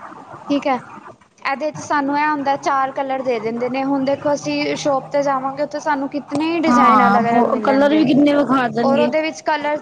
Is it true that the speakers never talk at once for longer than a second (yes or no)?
no